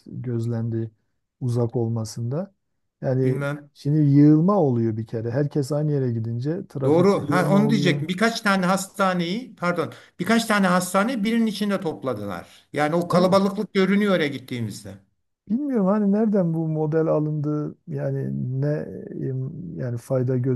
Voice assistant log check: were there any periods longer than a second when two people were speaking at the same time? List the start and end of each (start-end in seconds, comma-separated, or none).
6.8-8.0